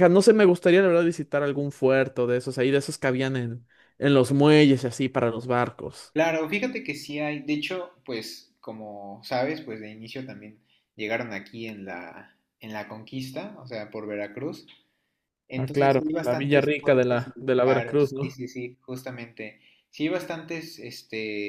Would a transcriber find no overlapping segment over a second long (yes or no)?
no